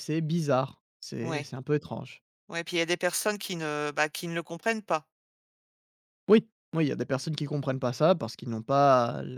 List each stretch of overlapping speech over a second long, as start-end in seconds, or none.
none